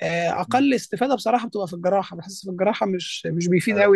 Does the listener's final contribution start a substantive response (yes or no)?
no